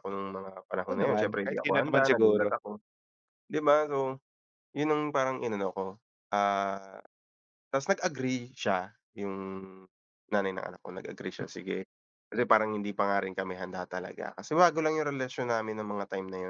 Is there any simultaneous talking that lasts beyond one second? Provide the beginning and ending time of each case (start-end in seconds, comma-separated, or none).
0.8-2.5